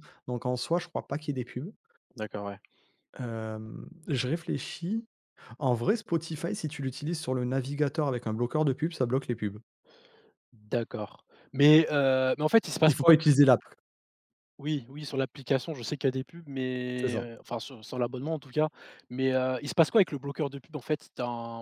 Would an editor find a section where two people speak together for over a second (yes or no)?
no